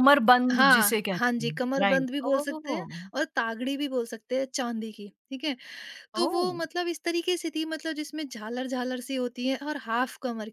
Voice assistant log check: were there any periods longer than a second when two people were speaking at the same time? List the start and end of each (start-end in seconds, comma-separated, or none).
0.5-3.0